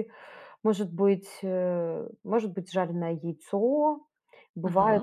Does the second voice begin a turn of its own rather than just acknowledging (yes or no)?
no